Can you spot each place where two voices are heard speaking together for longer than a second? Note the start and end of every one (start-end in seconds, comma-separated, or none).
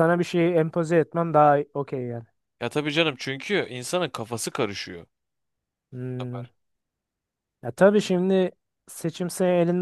none